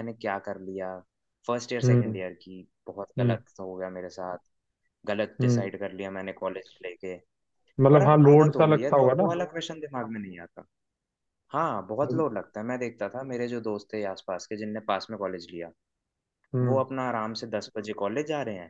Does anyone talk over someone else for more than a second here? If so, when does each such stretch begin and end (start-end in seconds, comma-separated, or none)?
7.9-9.4